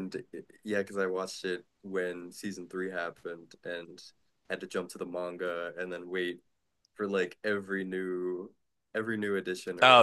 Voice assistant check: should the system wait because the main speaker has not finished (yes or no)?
no